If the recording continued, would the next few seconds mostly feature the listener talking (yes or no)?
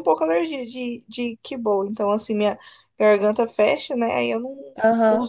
yes